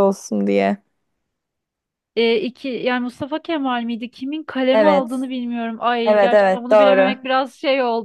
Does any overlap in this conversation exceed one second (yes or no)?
yes